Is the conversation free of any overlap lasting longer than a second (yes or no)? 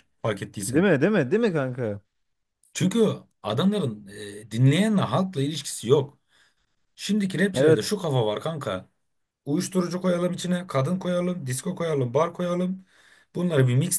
yes